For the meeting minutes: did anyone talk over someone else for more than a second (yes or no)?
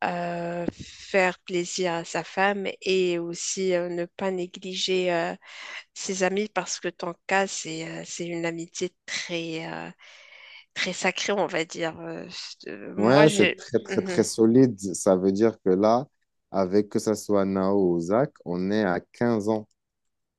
yes